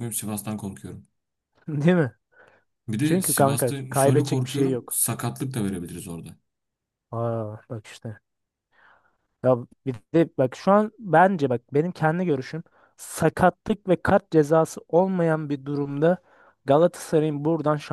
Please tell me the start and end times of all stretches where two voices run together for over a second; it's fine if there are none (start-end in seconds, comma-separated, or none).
3.0-5.0